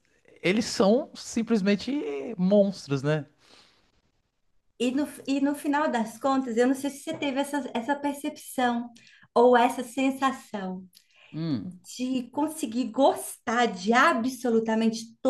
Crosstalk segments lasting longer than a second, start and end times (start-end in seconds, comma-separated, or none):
none